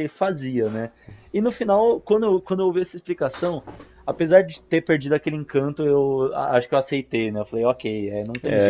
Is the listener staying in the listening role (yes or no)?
no